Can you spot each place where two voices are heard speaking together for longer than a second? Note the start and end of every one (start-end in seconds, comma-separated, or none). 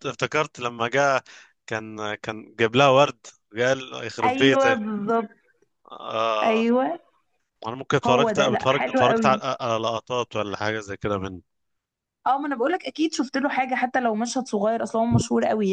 8.1-9.4